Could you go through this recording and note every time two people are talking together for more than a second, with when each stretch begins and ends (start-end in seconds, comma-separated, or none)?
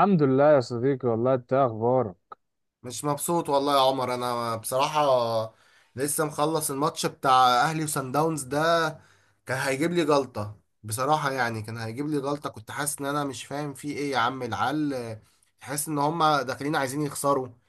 none